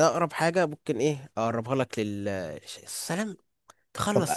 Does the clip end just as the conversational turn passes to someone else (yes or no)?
yes